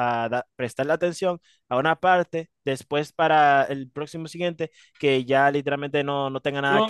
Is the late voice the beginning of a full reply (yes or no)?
yes